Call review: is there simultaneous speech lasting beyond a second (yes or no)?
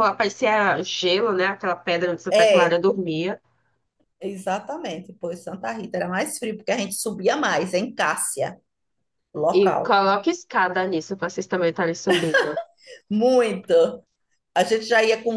no